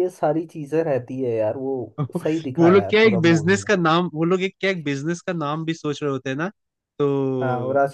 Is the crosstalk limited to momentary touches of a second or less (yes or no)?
no